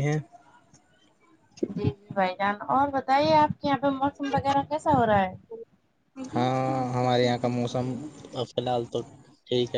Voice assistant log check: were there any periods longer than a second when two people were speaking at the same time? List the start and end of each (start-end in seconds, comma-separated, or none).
none